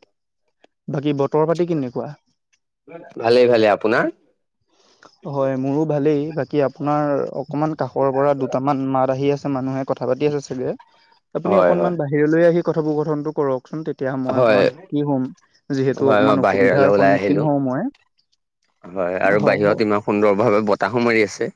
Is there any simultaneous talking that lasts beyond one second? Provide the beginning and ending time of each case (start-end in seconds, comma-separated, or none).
16.1-17.4